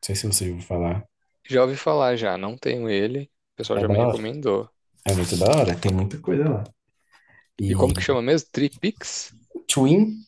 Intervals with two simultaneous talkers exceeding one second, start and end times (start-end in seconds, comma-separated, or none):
none